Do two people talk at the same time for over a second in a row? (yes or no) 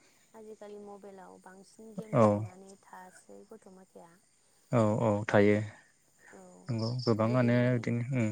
no